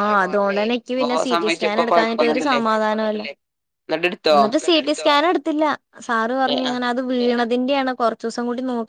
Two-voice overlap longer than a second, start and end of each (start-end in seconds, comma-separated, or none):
0.8-2.6